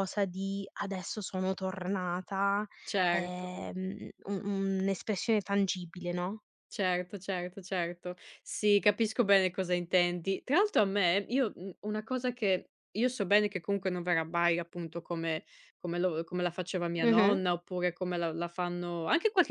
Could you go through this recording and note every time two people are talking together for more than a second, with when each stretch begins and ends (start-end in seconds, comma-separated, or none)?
none